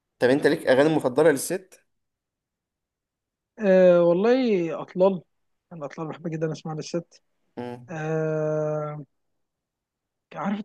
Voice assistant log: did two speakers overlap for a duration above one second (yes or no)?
no